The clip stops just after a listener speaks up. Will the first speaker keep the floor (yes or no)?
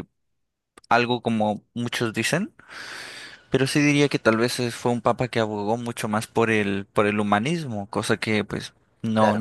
yes